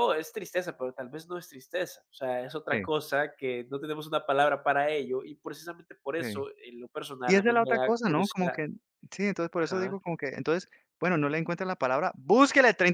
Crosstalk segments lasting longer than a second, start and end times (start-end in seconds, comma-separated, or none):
7.2-8.6